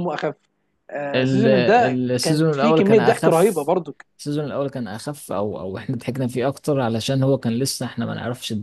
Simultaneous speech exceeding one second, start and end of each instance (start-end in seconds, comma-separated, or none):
2.1-3.6